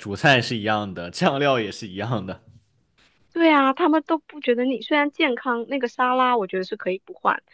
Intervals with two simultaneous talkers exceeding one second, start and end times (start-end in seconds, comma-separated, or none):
none